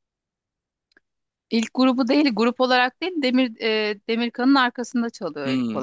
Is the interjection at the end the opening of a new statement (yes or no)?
yes